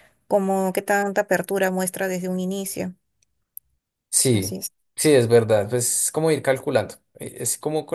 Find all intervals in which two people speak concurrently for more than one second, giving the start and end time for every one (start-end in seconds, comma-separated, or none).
none